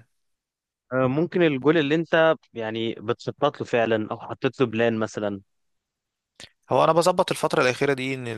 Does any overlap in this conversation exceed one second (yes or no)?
no